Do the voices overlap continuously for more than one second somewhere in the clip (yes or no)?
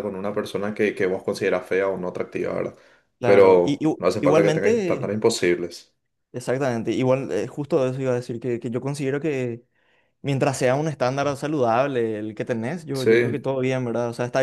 yes